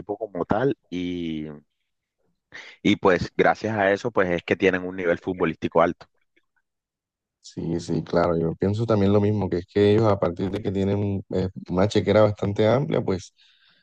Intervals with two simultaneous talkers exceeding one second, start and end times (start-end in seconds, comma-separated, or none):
none